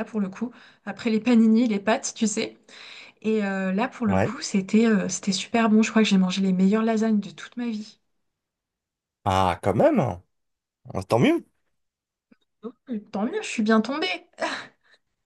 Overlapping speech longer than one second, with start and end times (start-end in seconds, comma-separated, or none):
none